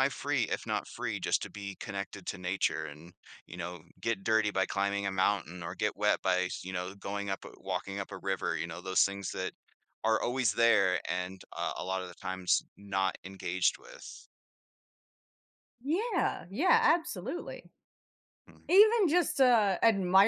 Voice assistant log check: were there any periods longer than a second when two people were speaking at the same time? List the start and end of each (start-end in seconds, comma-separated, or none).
none